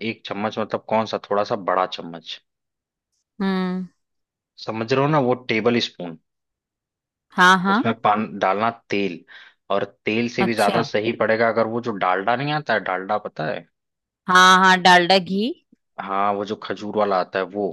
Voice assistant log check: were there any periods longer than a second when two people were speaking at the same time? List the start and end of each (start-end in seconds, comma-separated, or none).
none